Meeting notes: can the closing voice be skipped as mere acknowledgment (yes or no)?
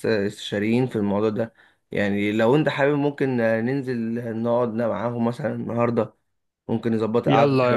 no